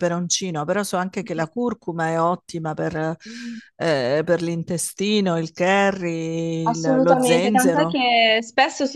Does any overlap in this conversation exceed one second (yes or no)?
yes